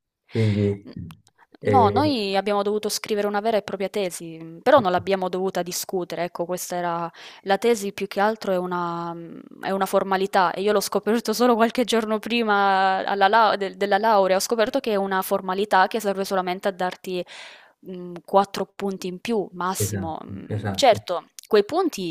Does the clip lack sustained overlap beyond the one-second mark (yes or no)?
no